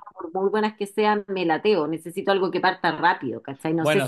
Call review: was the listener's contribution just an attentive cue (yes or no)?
no